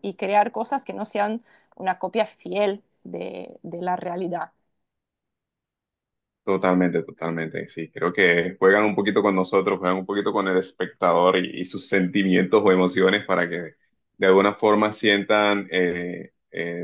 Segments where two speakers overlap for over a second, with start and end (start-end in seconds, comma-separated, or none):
none